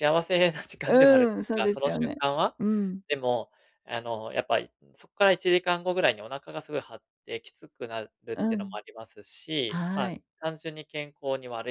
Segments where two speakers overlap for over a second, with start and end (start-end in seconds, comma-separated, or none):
0.9-2.1